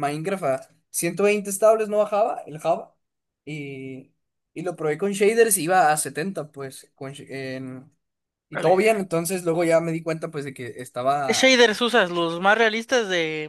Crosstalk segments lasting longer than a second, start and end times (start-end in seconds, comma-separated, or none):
none